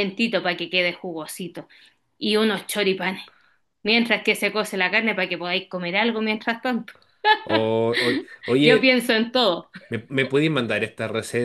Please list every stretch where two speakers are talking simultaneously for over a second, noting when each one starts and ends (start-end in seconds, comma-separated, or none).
none